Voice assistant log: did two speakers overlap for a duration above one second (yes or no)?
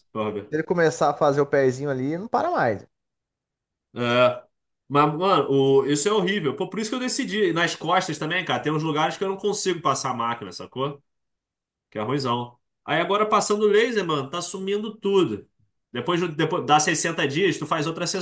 no